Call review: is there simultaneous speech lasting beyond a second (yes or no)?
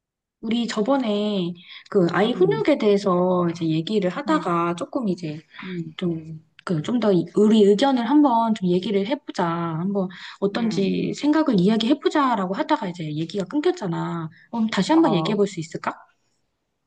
no